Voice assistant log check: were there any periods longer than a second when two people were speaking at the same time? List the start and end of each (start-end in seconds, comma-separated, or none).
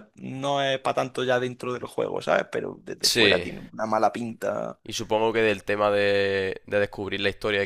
none